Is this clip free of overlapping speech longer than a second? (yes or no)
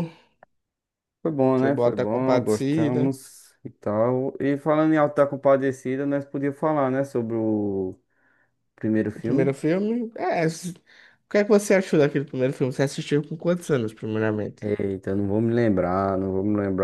no